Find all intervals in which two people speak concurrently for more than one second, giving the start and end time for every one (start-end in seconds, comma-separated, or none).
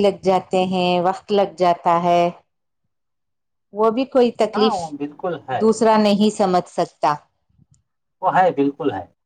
none